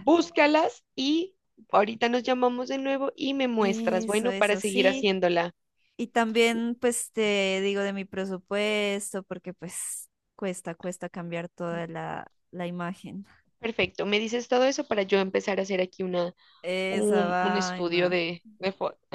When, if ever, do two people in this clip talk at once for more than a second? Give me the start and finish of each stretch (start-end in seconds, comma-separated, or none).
3.6-5.2, 16.9-18.2